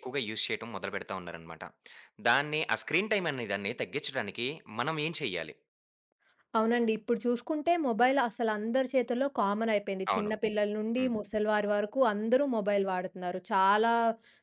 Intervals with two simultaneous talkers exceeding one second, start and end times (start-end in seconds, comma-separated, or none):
none